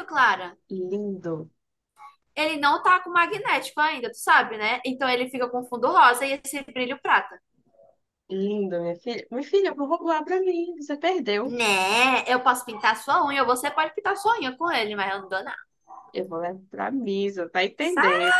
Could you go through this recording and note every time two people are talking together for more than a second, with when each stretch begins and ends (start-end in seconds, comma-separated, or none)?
none